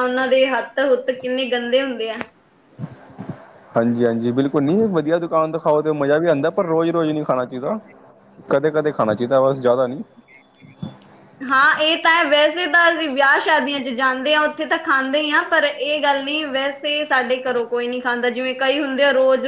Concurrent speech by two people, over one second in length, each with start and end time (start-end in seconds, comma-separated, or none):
none